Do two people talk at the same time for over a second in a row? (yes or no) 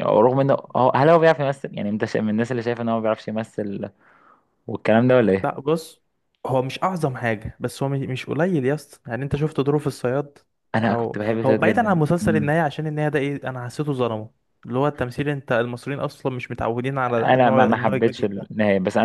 yes